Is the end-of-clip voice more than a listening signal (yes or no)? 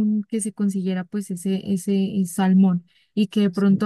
no